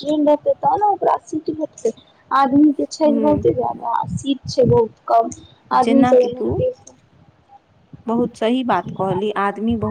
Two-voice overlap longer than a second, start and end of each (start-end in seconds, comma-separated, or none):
none